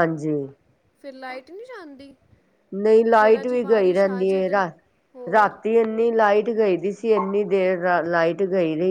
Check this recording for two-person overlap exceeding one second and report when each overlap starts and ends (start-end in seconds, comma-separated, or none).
3.2-4.5